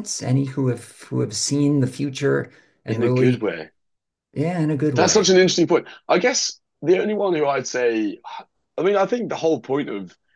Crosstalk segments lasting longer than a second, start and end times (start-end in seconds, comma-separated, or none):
none